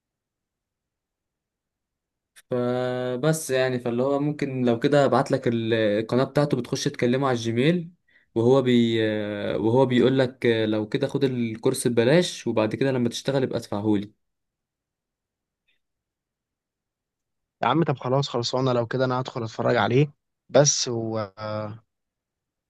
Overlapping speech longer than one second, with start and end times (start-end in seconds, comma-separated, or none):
none